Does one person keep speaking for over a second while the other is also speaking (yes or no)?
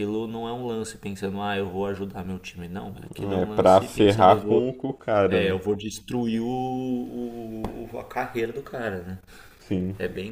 yes